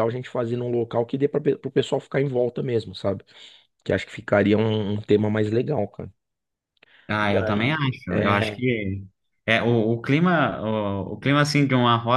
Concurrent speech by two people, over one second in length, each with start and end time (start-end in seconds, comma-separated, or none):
7.2-8.6